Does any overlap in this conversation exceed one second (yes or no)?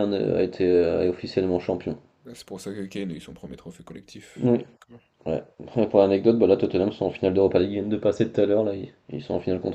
no